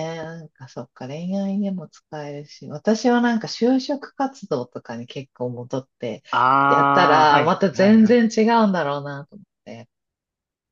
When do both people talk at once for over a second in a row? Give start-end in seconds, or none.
6.7-8.2